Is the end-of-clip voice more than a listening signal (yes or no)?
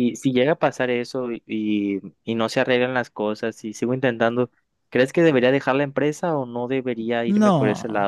yes